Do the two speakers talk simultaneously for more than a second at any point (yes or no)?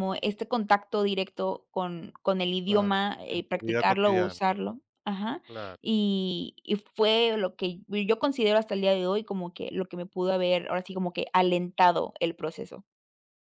yes